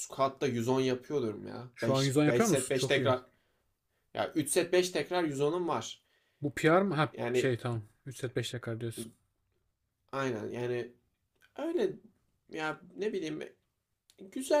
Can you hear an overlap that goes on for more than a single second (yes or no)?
yes